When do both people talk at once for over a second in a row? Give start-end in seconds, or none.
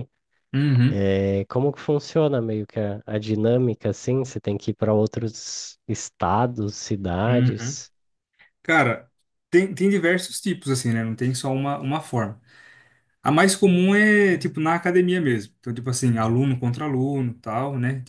none